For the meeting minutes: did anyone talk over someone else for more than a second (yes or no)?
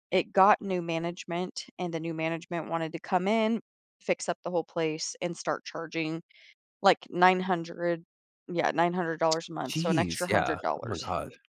yes